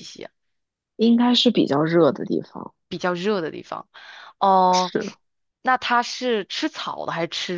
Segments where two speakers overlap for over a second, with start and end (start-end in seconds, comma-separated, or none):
none